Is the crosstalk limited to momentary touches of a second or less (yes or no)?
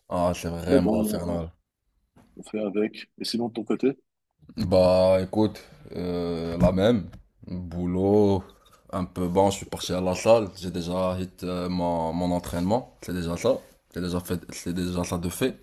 yes